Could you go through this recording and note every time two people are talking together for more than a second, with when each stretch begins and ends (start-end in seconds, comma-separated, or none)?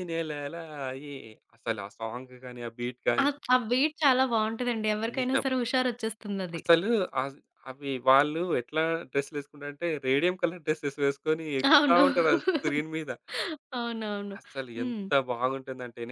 none